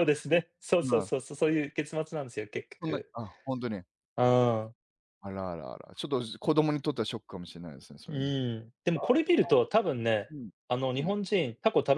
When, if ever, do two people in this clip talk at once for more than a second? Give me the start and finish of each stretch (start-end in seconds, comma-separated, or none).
none